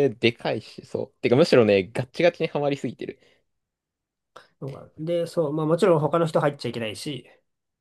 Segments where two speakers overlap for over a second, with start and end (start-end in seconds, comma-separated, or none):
none